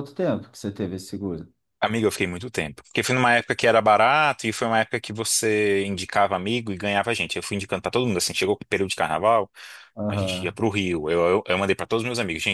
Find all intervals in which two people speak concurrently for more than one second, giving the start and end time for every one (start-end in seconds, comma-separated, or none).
none